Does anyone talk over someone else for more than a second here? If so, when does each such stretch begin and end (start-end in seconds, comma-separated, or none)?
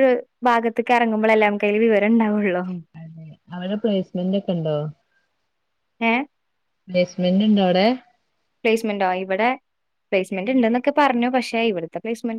none